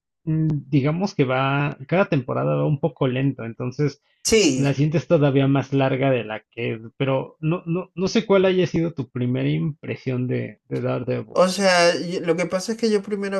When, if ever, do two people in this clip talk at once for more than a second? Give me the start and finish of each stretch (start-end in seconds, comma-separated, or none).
none